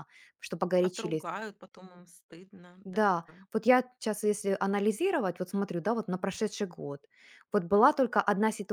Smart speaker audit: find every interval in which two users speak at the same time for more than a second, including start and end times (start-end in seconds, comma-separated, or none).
none